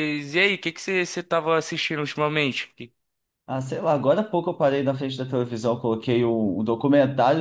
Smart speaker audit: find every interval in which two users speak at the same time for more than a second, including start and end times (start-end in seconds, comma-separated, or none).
none